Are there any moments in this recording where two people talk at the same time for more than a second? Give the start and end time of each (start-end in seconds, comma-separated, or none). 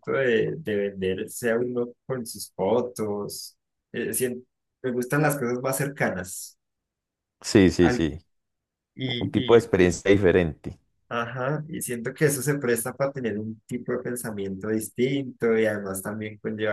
none